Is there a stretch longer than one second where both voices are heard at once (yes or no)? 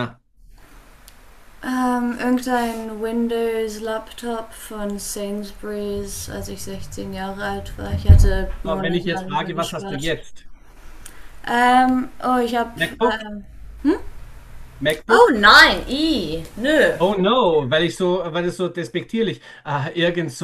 yes